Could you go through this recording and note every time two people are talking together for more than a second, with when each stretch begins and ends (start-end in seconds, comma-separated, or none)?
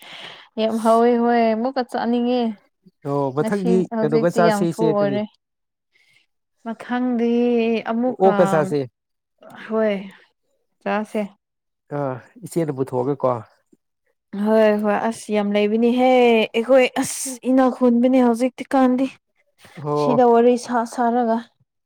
3.4-5.2